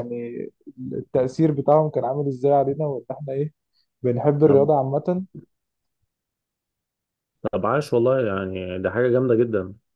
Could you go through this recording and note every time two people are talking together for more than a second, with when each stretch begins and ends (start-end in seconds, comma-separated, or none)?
none